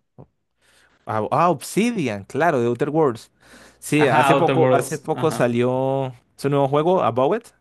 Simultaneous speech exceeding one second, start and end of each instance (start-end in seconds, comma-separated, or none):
4.0-5.6